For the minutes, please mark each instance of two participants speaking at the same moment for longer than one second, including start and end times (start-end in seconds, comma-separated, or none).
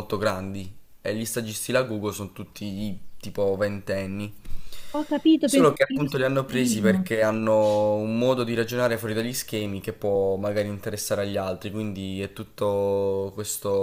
5.5-7.1